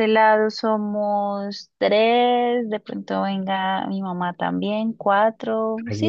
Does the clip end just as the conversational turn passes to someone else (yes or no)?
yes